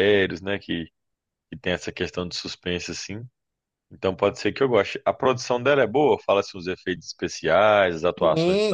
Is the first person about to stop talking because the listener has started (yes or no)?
yes